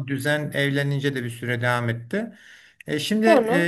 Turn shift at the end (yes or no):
no